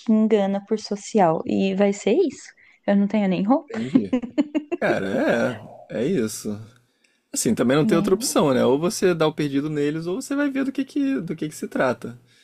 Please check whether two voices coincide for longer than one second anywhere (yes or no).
no